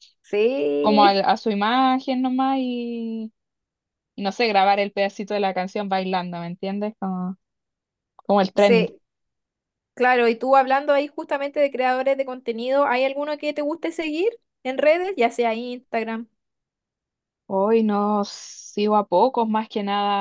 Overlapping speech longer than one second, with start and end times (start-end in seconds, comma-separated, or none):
none